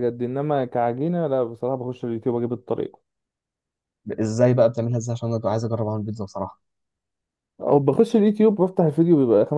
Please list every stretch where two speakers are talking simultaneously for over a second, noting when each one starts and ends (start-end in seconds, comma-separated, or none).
none